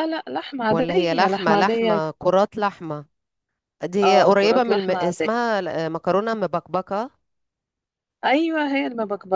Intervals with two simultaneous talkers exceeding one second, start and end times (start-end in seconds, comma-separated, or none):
0.7-2.0, 4.0-5.3